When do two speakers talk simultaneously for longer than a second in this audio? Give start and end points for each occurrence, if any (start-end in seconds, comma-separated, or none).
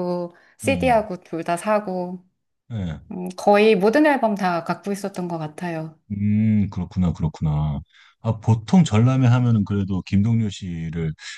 none